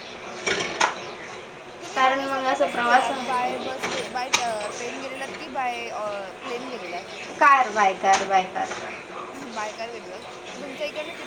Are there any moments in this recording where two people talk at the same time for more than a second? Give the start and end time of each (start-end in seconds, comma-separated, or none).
1.9-3.7